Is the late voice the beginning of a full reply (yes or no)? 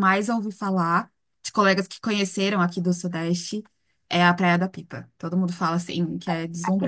yes